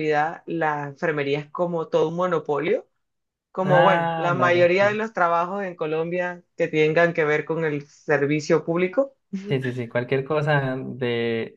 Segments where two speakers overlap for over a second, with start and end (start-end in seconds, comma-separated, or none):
3.6-5.0